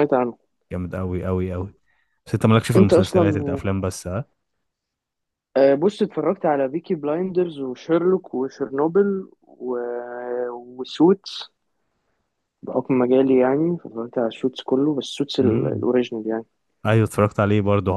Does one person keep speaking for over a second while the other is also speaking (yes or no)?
no